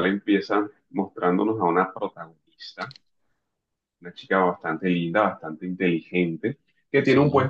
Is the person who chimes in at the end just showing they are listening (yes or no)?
yes